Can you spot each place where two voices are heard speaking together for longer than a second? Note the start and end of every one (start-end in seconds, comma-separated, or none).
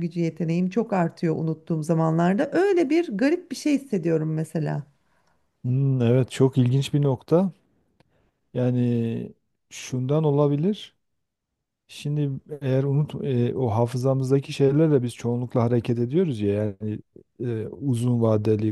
none